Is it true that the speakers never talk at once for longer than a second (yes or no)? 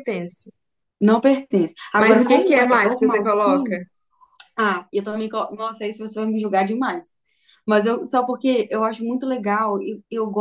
no